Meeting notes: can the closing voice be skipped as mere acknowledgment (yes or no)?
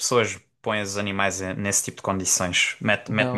yes